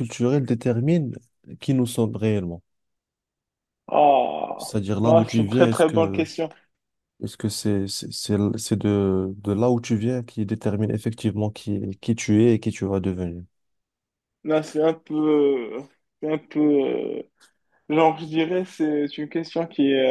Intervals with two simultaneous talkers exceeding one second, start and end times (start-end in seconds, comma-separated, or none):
4.6-6.3